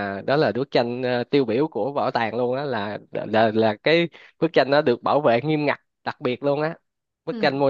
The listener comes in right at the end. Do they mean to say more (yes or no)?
no